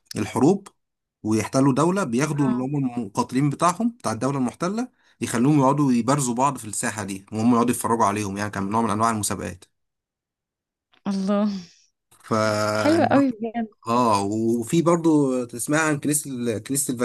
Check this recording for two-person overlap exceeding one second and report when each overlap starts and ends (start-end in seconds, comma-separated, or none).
none